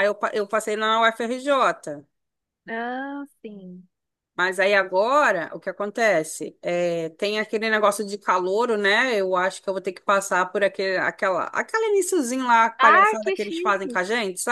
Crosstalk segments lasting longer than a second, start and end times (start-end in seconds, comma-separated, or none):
12.8-14.0